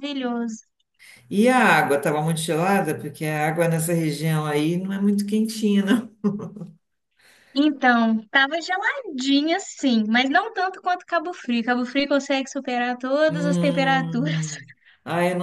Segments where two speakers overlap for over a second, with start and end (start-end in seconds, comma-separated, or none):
13.3-14.6